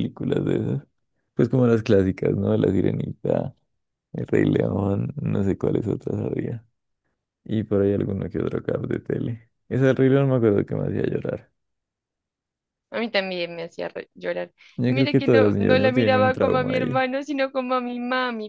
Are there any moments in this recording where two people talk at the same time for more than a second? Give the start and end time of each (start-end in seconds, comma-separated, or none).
14.8-17.0